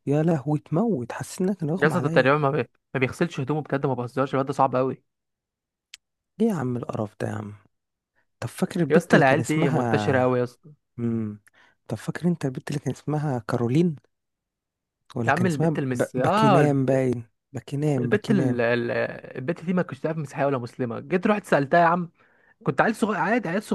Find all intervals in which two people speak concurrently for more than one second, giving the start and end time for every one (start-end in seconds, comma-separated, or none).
8.9-10.4, 15.3-16.6